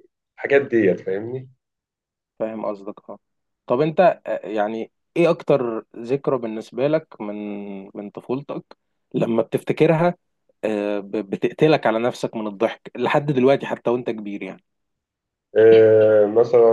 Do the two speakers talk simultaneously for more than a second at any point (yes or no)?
no